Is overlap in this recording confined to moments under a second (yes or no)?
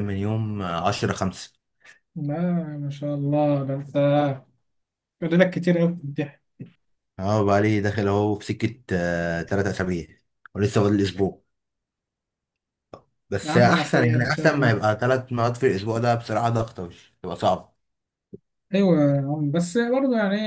no